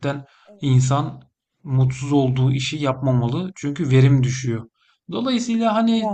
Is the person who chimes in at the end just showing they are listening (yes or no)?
yes